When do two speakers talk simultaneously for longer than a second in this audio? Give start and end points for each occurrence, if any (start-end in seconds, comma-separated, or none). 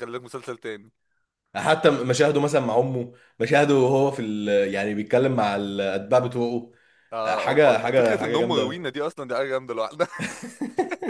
7.2-8.8